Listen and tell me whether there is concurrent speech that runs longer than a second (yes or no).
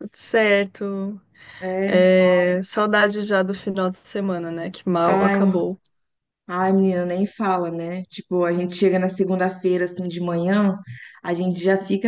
no